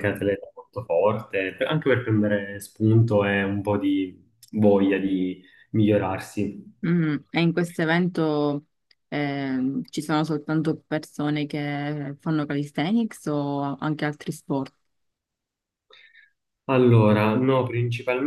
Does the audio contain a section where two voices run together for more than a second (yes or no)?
no